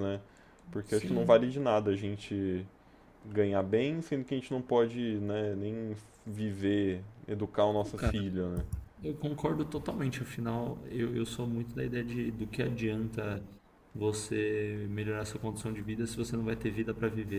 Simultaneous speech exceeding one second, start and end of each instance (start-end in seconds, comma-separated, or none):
none